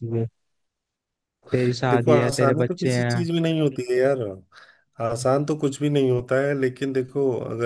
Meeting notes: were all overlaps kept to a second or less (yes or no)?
no